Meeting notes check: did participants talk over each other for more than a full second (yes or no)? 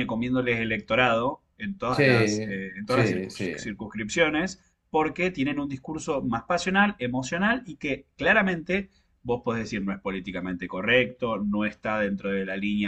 yes